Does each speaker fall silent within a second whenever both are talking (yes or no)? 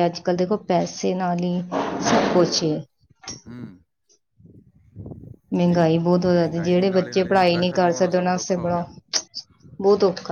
no